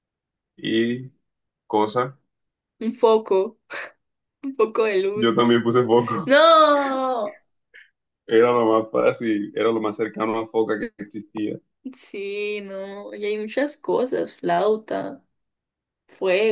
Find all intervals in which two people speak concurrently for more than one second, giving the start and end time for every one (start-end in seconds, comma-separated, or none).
none